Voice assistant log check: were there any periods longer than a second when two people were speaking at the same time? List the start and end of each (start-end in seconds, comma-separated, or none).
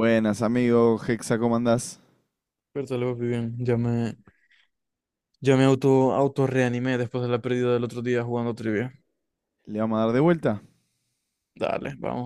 none